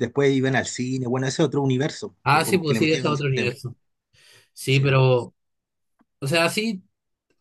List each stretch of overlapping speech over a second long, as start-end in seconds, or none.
2.2-3.6